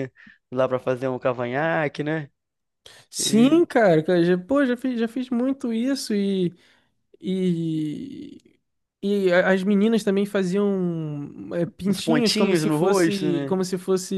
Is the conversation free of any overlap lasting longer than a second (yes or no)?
no